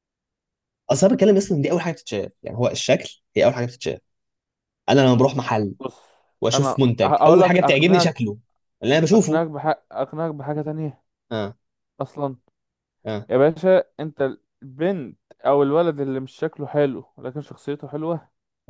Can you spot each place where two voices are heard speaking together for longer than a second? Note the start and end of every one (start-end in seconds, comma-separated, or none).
6.5-8.1